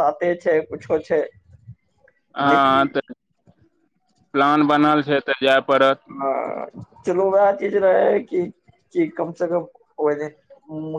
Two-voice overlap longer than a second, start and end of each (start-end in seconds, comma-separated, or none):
none